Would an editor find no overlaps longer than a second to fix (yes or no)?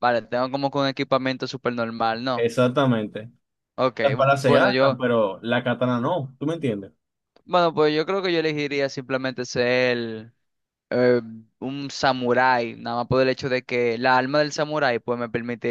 yes